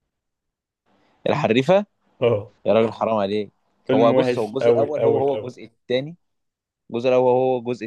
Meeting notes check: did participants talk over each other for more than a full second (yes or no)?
yes